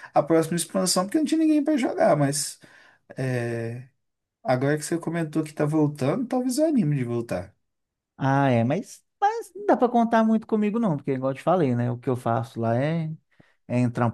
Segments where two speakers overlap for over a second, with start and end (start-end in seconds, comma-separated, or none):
none